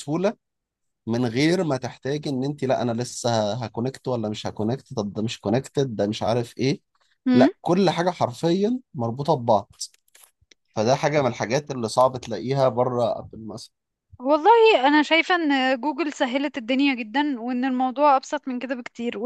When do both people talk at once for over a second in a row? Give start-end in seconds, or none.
none